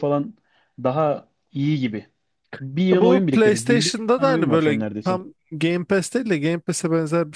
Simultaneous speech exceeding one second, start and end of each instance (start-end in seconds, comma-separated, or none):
2.9-5.2